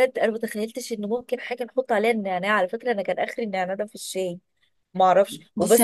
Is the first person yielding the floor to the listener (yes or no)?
yes